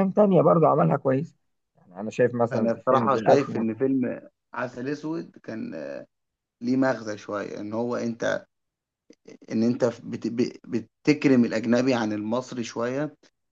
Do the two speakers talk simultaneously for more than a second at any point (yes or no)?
yes